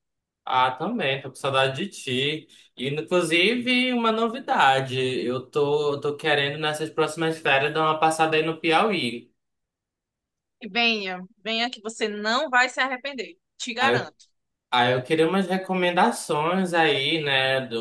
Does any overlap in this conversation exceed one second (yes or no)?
no